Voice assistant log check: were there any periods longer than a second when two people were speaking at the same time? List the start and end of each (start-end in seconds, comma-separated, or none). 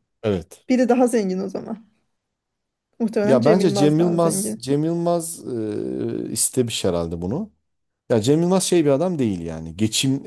3.2-4.7